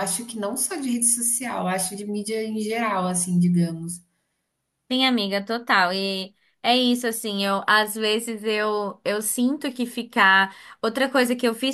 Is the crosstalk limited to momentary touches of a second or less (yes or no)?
yes